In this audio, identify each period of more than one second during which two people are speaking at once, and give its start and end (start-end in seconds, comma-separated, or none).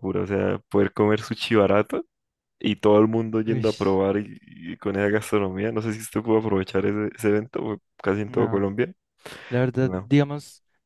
none